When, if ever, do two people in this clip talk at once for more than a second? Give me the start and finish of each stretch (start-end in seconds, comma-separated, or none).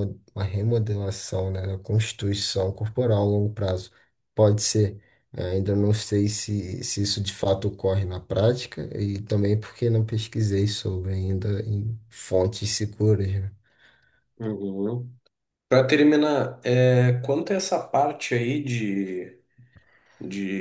none